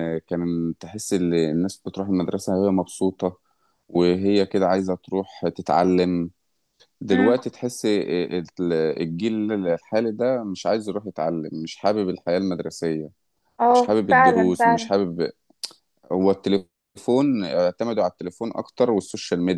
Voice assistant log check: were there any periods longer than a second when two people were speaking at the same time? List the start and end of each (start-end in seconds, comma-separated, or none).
13.7-14.9